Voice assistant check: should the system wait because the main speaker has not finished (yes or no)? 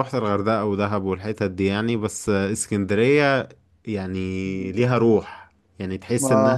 yes